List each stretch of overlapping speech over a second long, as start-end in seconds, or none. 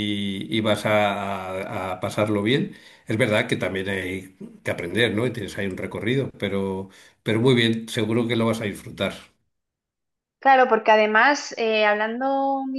none